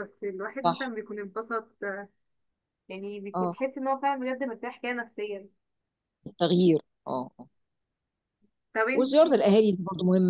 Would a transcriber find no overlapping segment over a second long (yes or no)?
yes